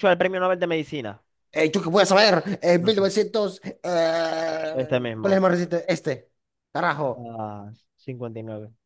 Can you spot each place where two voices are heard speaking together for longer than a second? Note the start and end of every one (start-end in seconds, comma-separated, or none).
none